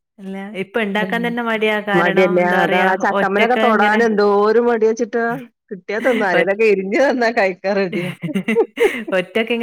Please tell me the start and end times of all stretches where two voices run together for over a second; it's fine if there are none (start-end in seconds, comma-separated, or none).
2.0-4.0